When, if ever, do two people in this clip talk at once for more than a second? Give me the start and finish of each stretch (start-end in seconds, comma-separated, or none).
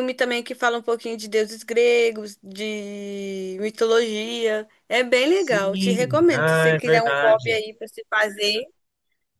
5.3-7.6